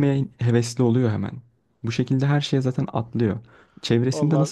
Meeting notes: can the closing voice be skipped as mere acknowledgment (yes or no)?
yes